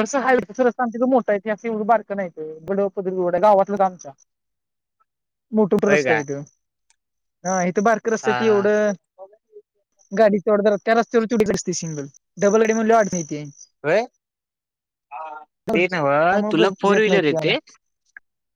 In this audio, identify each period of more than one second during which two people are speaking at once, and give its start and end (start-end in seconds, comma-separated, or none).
15.7-17.6